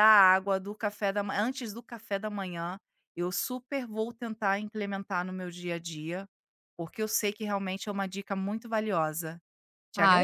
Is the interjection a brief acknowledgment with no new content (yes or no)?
no